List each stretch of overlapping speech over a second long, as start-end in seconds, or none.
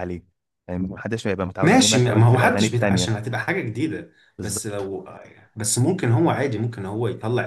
1.6-3.1